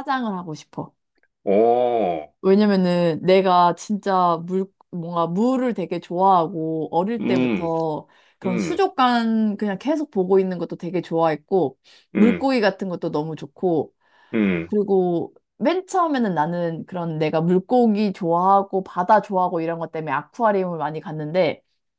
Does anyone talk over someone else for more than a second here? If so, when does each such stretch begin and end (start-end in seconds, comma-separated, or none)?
none